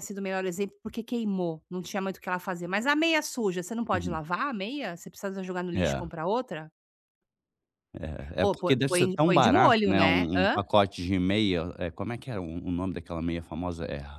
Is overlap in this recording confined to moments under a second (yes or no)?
no